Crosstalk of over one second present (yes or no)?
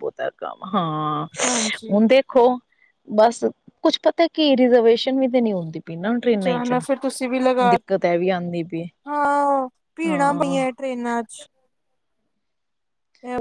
no